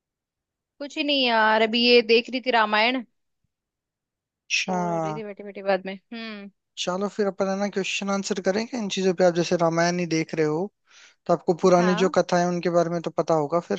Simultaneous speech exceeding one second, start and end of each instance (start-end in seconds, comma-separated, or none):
none